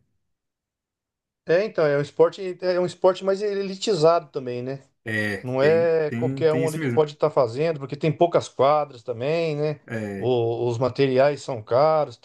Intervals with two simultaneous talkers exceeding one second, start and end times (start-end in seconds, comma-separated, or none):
5.4-7.0